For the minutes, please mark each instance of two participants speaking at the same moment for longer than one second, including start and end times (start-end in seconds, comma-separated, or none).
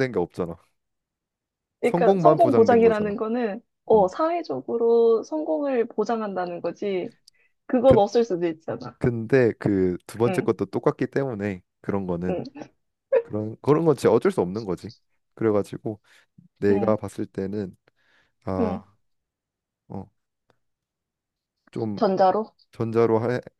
1.8-3.1